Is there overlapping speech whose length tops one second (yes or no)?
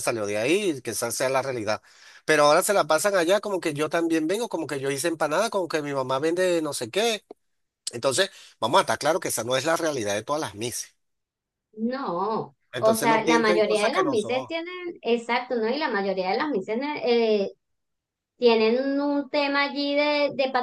yes